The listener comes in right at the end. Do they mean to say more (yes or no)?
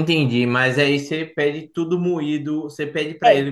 no